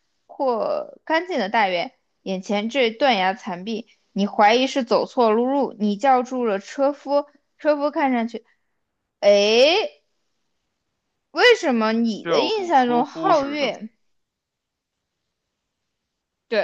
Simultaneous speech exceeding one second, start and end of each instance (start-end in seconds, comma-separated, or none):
12.2-13.7